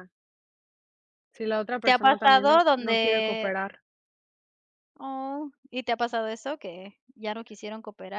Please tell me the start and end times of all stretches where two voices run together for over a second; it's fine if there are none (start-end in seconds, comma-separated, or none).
1.8-3.5